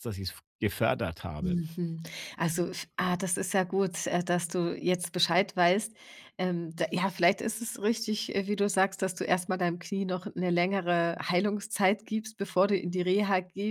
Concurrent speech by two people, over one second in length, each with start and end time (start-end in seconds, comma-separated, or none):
none